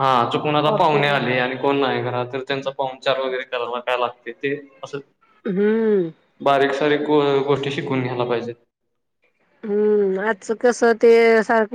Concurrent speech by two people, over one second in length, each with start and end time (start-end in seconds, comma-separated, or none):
none